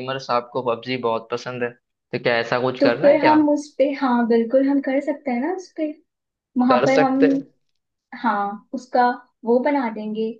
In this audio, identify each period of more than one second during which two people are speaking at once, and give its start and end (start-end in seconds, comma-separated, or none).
none